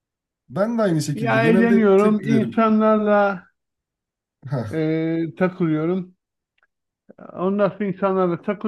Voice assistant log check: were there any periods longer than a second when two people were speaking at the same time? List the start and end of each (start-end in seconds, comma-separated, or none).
1.1-2.7